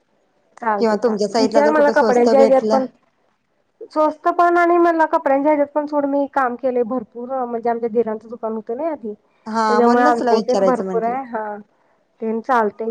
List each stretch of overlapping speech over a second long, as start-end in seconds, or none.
0.8-2.8, 9.5-11.1